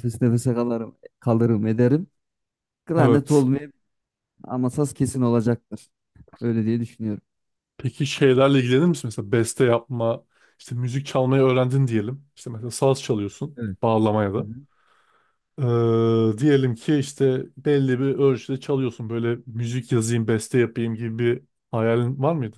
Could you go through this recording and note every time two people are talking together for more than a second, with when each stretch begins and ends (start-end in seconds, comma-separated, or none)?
none